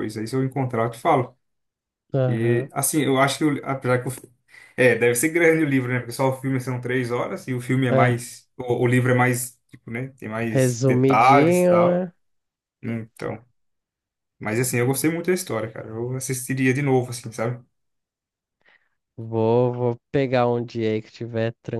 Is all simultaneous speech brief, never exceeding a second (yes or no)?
no